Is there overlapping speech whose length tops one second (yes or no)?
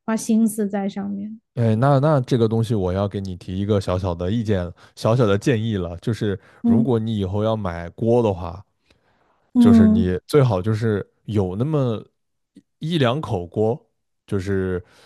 no